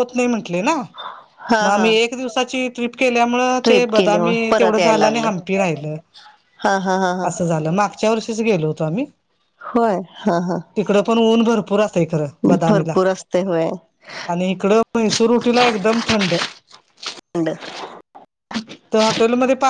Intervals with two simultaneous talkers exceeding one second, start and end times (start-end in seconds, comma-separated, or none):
3.6-5.3